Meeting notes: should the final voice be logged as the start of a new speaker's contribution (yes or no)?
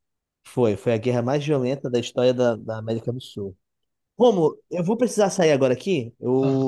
no